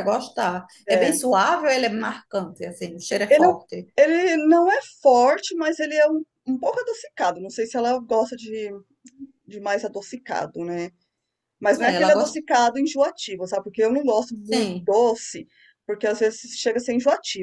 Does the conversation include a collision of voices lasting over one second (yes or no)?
no